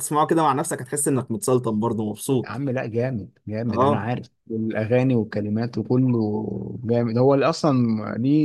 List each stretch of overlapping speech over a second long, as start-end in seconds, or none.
none